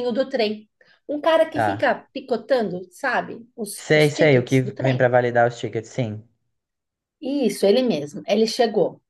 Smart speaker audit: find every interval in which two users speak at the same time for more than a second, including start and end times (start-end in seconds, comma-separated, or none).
3.9-5.1